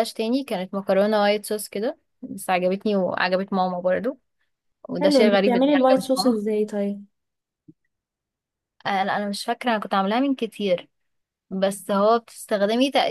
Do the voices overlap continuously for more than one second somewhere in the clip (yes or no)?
yes